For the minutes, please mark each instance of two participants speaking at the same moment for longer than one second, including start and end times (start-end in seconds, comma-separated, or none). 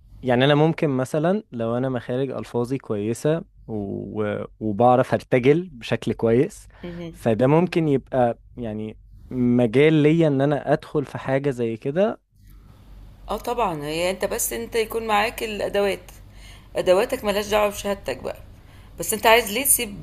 none